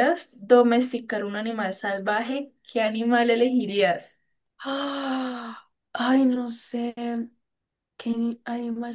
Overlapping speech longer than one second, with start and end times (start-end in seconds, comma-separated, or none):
none